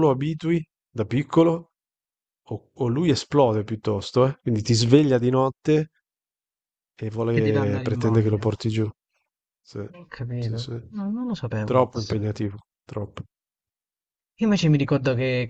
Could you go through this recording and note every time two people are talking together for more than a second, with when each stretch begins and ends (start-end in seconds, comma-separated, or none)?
7.3-8.5